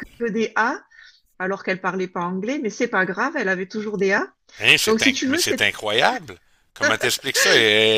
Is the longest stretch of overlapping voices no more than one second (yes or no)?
yes